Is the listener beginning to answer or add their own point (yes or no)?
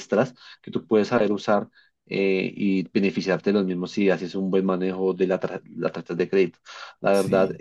no